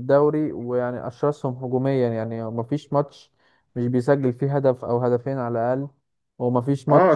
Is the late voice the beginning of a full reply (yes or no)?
yes